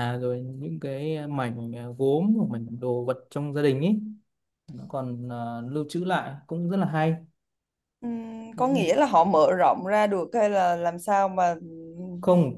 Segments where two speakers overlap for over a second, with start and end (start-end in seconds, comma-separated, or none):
none